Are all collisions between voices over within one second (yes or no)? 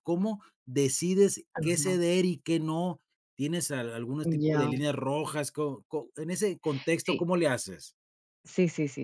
yes